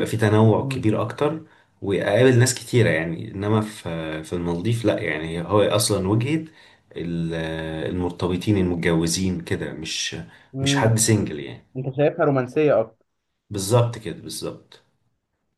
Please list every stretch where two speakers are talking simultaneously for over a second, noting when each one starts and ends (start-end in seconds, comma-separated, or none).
none